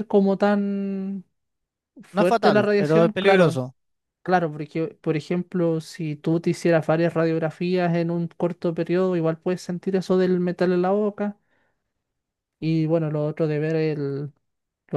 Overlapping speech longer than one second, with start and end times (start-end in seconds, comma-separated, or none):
2.1-3.6